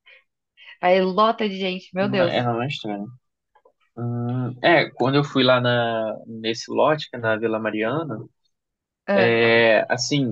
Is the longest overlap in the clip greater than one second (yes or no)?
no